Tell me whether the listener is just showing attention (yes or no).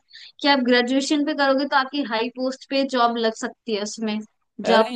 no